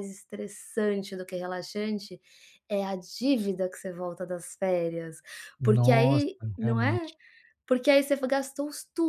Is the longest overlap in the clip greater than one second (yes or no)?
yes